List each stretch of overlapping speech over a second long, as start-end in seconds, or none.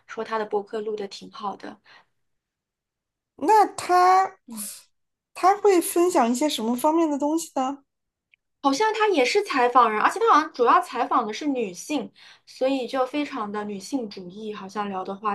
none